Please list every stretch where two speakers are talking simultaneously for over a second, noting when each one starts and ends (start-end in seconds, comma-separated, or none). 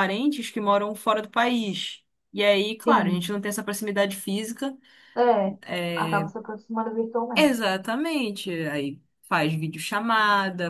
none